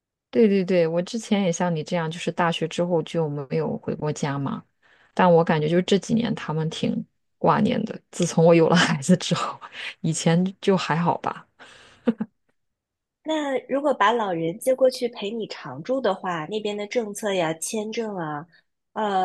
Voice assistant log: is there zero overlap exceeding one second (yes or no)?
yes